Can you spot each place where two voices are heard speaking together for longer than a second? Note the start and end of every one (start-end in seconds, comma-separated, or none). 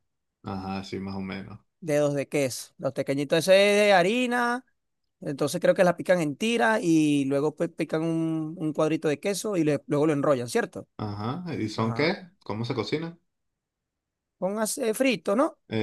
none